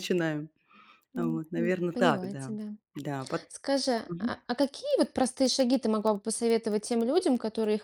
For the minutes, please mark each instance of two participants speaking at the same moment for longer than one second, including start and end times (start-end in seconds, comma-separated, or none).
1.2-2.5